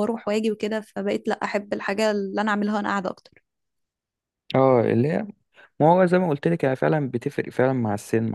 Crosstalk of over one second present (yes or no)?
no